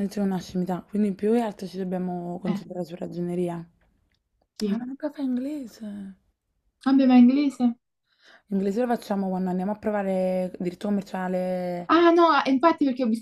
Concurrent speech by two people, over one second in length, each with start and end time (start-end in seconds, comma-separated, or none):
none